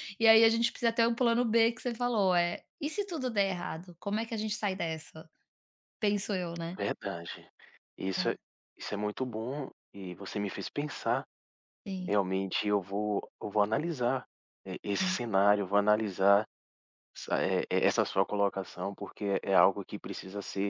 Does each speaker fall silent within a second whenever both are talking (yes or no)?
yes